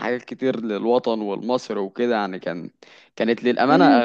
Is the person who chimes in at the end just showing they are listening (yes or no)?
no